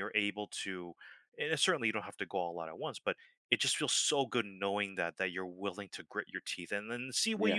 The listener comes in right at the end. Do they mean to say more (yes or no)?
no